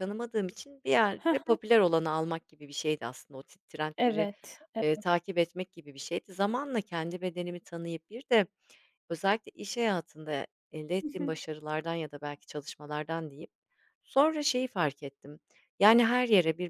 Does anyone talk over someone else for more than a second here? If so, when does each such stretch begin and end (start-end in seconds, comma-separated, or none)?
none